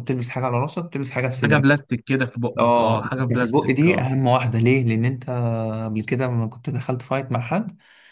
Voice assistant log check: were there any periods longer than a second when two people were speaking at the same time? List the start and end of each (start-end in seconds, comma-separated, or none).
2.6-4.1